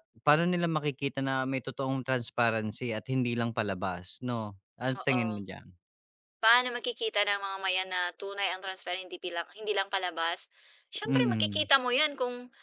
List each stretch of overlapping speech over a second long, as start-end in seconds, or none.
none